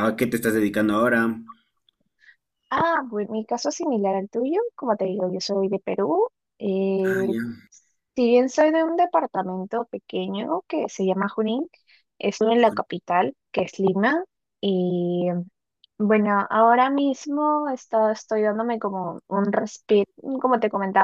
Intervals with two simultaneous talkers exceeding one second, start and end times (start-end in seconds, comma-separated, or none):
none